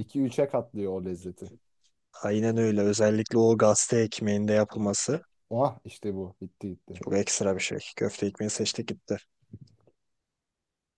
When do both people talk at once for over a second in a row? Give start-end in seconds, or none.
none